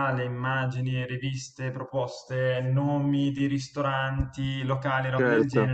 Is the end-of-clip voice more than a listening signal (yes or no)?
no